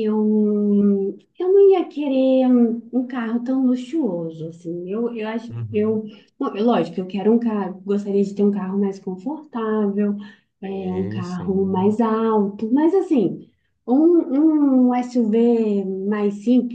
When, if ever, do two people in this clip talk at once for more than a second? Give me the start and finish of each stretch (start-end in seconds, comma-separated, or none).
10.6-12.0